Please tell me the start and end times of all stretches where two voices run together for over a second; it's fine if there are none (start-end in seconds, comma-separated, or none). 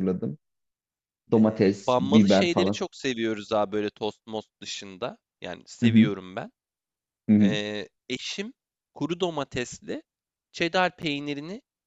1.4-2.8